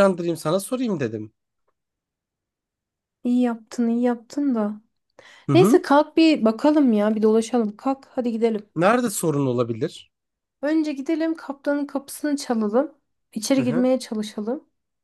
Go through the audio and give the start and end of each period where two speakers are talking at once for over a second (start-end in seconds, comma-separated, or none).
none